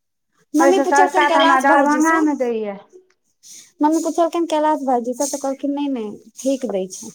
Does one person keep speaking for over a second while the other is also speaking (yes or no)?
yes